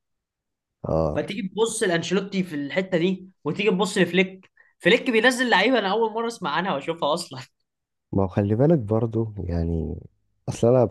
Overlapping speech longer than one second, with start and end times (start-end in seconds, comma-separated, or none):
none